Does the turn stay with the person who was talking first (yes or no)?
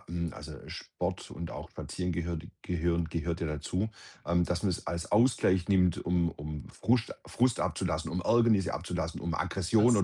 yes